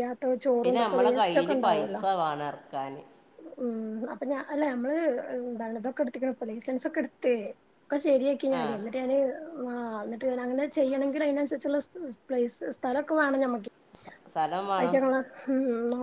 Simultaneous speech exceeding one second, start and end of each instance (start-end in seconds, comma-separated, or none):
0.6-2.0